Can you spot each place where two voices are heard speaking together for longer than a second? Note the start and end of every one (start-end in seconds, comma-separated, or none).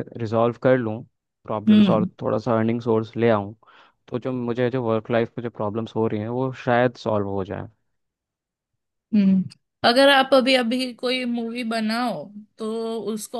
none